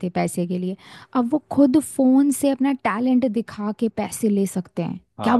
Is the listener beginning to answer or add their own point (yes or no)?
yes